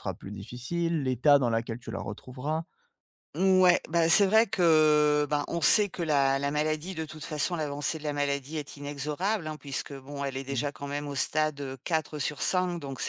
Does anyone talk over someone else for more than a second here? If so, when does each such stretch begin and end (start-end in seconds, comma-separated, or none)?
none